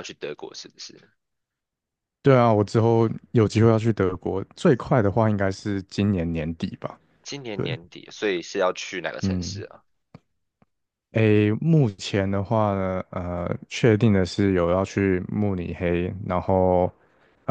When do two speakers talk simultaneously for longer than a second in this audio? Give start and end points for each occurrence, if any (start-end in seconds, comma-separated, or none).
none